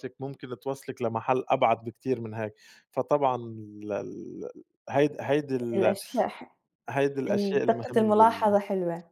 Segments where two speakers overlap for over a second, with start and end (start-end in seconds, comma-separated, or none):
7.3-8.6